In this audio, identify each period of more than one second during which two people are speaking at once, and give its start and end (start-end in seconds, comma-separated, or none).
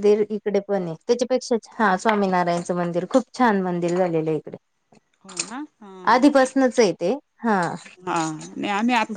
none